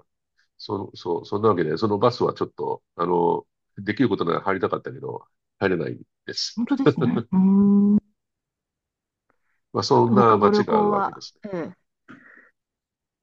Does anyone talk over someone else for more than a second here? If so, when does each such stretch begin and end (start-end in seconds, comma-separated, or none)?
9.9-11.4